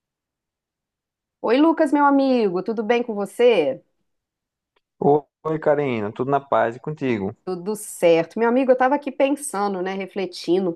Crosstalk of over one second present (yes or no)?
no